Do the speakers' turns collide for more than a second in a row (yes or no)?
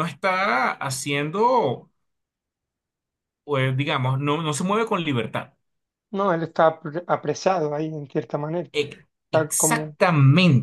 no